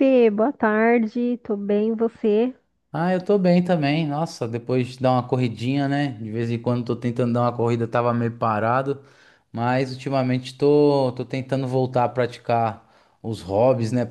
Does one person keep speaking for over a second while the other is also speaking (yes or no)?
no